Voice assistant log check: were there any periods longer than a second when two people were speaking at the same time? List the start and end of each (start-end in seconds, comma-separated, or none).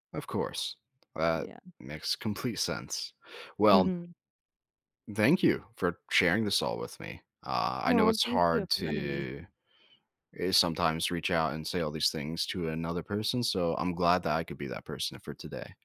7.9-9.2